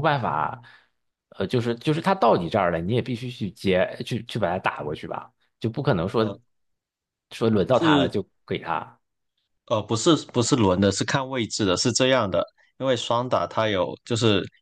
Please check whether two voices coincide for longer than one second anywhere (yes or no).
no